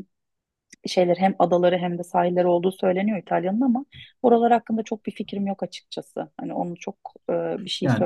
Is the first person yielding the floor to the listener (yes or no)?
yes